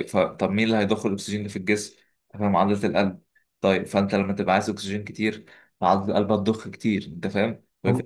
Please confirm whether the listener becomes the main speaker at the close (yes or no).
no